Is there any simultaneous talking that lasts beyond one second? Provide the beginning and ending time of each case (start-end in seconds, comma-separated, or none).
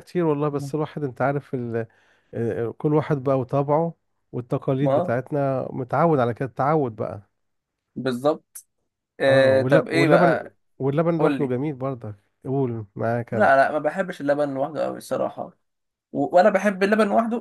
9.3-10.6